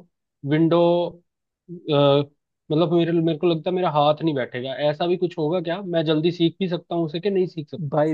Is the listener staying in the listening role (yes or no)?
no